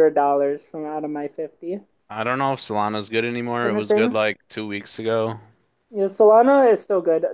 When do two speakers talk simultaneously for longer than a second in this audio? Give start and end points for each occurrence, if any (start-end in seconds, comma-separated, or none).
none